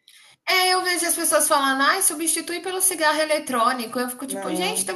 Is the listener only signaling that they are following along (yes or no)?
yes